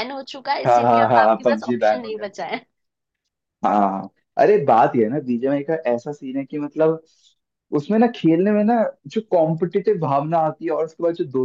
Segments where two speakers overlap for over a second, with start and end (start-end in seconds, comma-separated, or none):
0.7-2.1